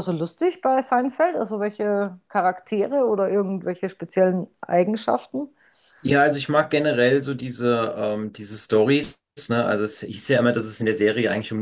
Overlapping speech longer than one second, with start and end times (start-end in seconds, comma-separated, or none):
none